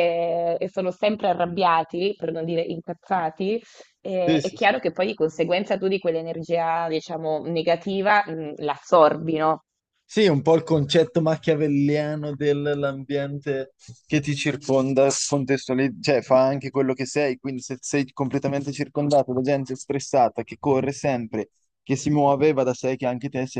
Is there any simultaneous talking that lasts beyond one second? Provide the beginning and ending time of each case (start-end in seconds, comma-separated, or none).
none